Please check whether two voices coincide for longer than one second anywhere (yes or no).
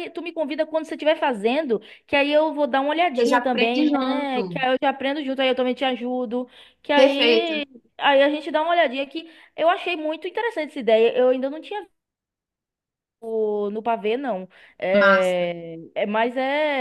yes